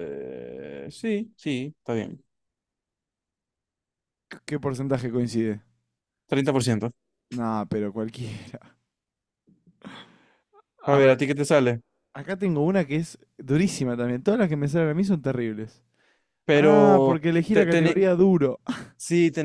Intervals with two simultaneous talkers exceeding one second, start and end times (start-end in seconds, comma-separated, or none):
16.5-18.0